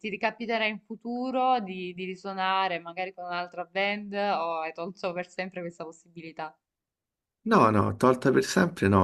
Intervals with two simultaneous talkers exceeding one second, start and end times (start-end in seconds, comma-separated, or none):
none